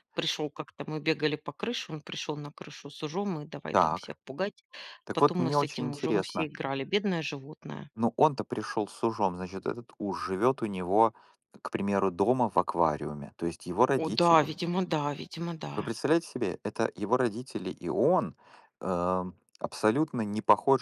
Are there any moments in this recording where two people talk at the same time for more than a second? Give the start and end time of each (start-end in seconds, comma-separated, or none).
5.1-6.5